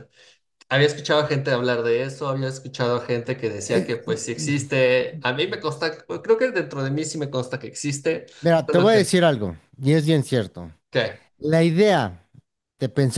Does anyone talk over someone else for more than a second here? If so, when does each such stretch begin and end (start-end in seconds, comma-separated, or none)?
none